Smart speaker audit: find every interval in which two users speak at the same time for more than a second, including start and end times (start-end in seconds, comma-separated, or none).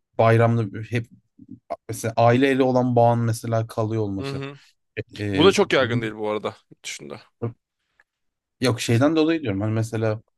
none